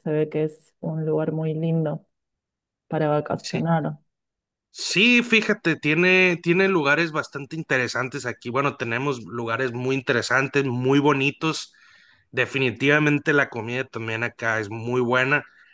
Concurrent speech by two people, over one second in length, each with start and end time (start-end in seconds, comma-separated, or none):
none